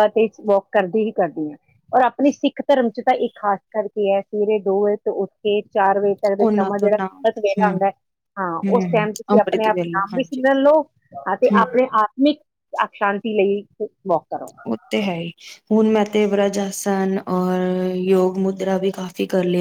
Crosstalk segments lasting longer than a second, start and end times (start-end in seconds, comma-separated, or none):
6.4-7.7, 8.7-10.4